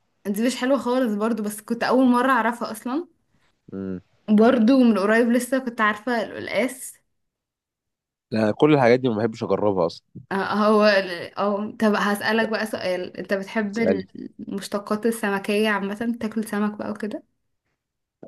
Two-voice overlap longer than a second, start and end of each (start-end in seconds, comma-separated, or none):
none